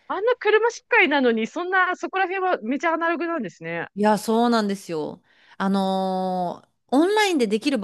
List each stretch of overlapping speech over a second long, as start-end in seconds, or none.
none